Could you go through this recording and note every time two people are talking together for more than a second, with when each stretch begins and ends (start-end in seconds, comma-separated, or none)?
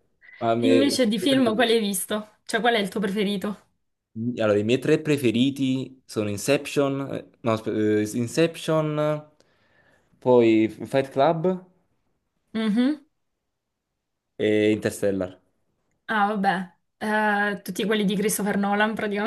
0.6-1.8